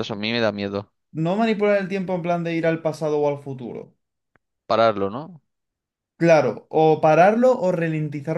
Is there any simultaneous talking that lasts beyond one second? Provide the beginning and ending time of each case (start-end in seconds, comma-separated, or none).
none